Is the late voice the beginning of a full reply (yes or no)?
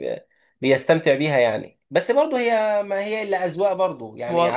yes